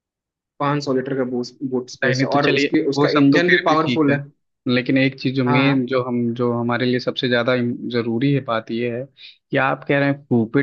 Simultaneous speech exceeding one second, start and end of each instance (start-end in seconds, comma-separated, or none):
2.0-4.2